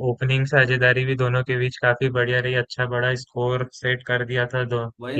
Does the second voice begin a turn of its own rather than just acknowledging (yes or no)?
yes